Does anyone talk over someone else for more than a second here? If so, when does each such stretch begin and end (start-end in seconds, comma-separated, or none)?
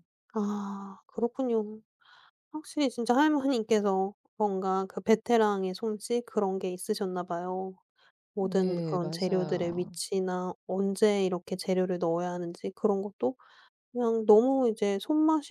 8.4-10.0